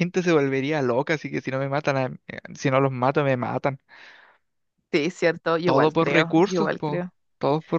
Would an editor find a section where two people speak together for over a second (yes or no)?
yes